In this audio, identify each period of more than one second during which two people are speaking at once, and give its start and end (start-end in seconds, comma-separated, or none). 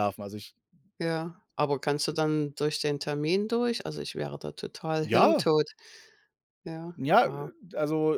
none